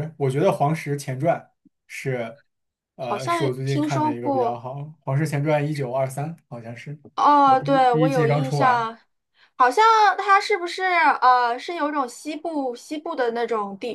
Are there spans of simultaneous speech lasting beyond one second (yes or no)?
yes